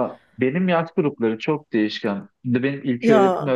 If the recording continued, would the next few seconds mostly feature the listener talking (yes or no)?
no